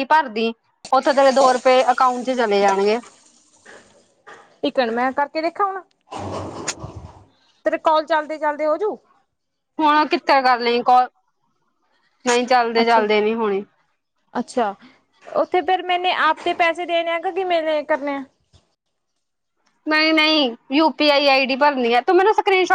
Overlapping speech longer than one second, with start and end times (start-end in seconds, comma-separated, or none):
none